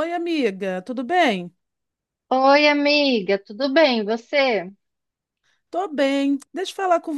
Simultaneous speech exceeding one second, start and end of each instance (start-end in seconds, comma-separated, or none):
none